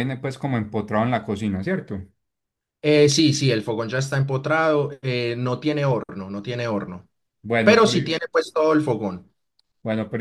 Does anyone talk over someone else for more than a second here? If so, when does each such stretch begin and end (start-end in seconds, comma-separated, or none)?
none